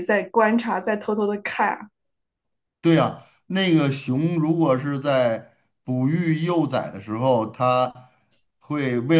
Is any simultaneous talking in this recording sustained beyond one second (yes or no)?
no